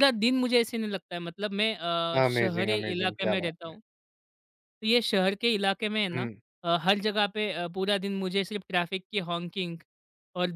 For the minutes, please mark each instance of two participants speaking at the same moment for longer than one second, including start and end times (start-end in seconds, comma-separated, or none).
2.2-3.7